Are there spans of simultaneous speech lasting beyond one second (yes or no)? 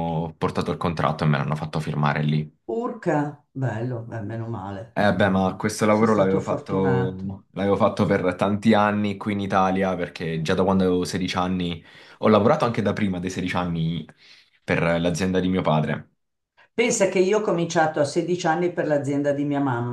yes